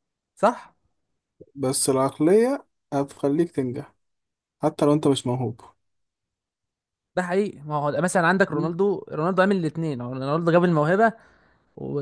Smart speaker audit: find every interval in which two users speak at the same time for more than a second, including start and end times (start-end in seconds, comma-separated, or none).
none